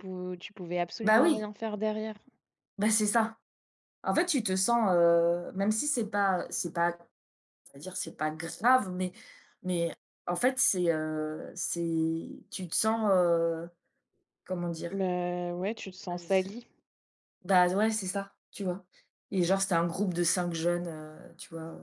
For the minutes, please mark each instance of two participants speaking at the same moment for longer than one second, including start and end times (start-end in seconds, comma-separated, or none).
none